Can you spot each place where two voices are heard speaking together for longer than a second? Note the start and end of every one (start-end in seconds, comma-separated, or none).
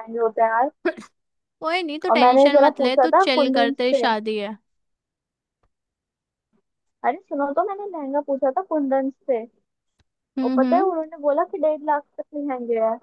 2.1-4.1